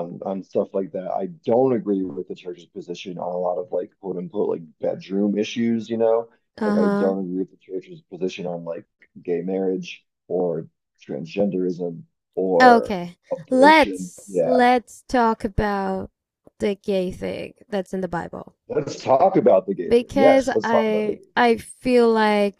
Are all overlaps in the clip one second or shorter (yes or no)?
no